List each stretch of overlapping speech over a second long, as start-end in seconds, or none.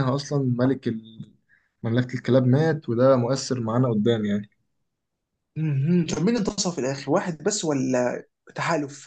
none